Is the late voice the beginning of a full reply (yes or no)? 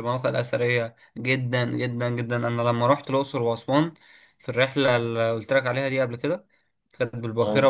no